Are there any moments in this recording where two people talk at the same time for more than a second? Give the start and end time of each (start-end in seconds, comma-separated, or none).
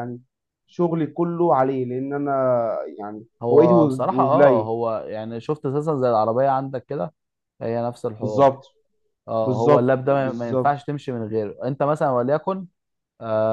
3.4-4.7, 9.4-10.7